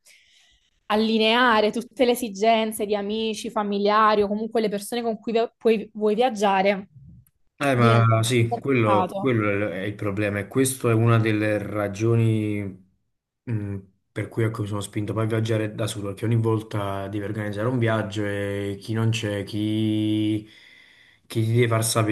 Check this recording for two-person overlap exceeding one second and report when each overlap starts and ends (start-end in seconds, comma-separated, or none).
7.7-9.3